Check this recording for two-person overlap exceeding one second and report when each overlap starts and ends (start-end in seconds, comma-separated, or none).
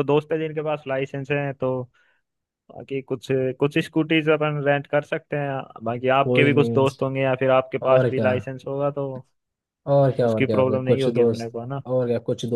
10.3-11.8